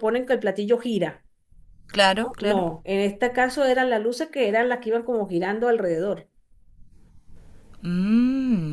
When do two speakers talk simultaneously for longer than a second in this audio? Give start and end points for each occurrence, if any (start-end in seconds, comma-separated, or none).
none